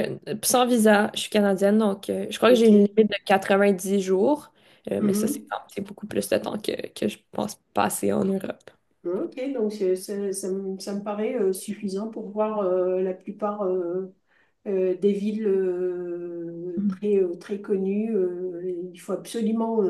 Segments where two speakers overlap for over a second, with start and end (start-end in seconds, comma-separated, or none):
none